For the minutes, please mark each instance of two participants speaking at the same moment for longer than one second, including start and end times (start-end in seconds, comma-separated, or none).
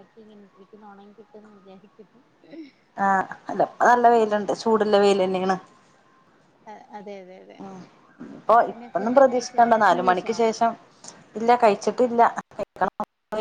8.7-10.3